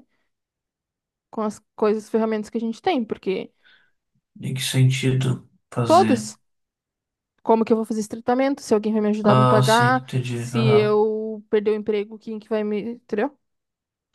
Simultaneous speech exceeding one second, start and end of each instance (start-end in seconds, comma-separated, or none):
9.2-11.0